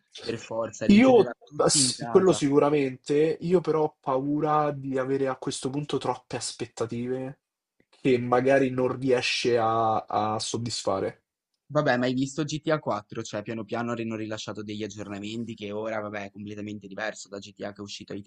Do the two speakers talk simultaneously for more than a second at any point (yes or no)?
yes